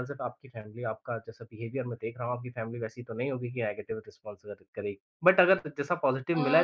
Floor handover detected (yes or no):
no